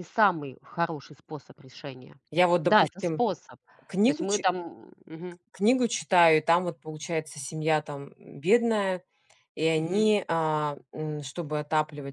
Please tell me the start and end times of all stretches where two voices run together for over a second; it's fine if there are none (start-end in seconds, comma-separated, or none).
none